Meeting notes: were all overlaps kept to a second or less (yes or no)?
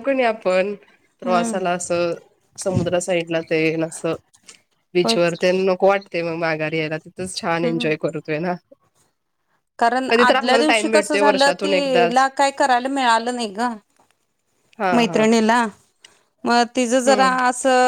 no